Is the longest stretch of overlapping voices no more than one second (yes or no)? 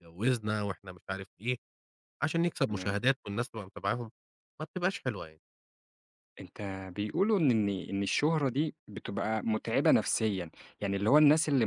yes